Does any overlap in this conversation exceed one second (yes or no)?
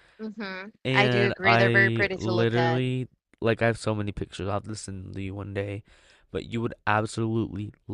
yes